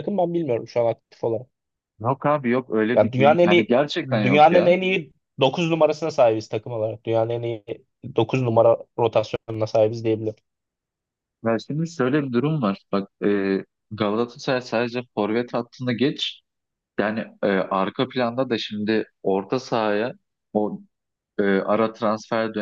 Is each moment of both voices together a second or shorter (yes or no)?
no